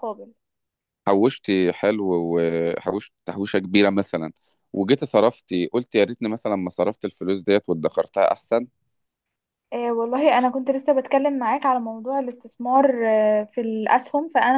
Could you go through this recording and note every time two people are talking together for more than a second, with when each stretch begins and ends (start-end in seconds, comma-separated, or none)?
none